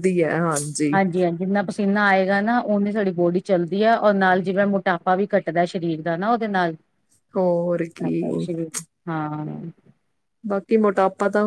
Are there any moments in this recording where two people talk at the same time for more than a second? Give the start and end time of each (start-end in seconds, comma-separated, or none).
none